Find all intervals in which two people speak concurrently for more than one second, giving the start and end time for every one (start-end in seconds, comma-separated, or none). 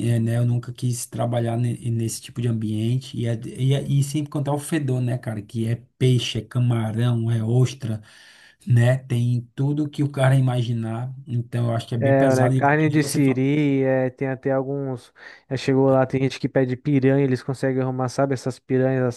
12.0-13.4